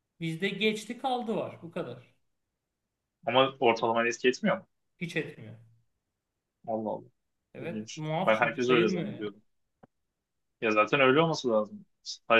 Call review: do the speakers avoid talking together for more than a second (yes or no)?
no